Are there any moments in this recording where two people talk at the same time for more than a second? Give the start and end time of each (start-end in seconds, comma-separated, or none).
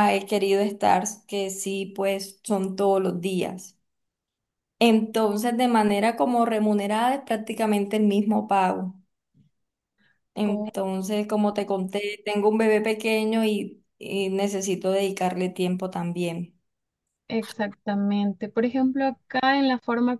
none